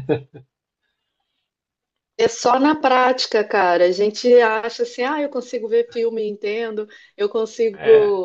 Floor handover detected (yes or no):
no